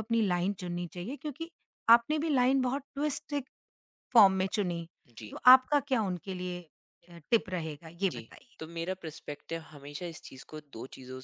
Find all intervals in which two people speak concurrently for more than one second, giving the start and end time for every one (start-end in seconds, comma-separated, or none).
none